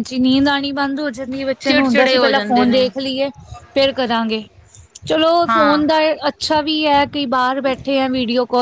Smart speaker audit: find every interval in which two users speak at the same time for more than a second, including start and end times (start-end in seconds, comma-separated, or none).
1.6-2.9